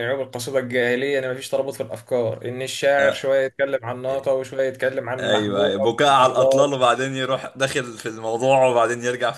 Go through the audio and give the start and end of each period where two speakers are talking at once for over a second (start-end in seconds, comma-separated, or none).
5.2-6.8